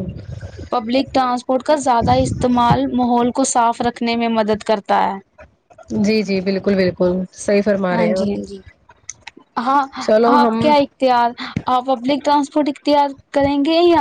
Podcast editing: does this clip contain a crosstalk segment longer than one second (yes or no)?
no